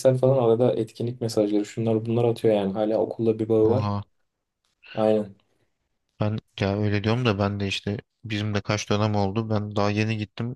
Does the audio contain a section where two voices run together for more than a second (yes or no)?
no